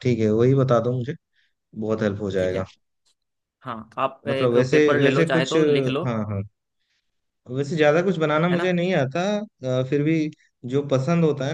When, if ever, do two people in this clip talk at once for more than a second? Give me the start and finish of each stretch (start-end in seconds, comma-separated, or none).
4.3-6.0